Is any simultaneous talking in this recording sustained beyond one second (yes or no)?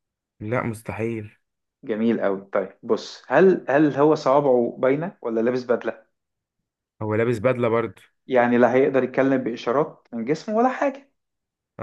no